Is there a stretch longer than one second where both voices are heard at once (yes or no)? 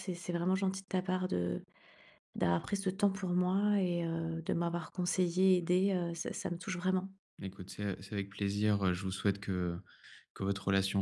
no